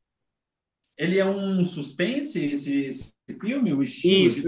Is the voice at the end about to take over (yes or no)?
yes